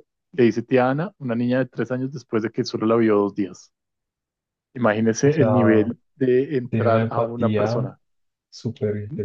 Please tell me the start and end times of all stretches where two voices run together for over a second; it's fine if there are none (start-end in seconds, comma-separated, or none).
6.7-7.9